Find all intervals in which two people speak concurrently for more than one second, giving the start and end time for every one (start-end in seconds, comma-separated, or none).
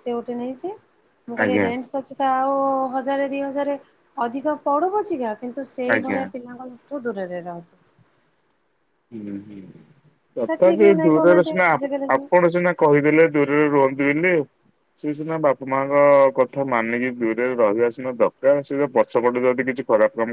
10.4-12.3